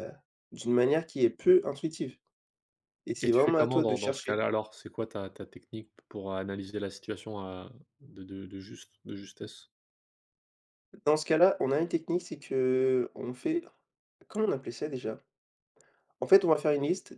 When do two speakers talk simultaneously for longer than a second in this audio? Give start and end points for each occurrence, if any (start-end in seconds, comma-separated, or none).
3.2-4.4